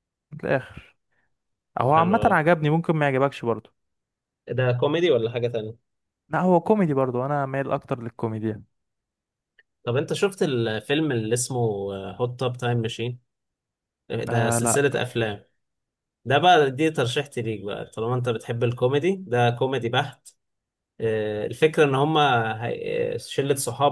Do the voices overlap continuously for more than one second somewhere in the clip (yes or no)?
no